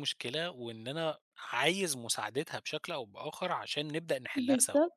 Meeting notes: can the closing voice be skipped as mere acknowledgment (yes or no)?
no